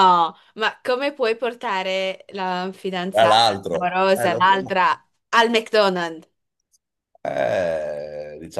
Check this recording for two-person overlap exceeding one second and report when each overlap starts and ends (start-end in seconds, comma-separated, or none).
3.1-4.8